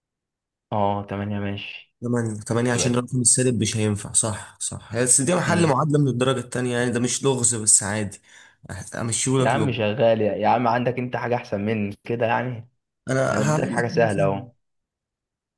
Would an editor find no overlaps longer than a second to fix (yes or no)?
no